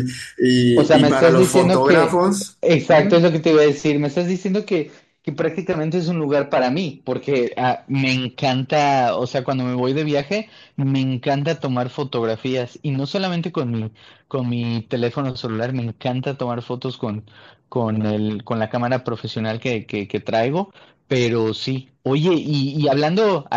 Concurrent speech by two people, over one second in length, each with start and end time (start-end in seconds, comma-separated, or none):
0.7-2.2